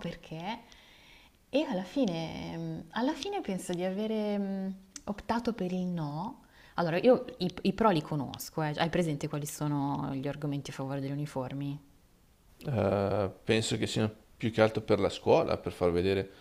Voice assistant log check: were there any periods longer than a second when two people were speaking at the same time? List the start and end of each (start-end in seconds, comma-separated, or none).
none